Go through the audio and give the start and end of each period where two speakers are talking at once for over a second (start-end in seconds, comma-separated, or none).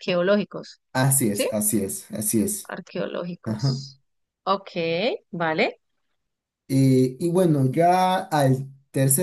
none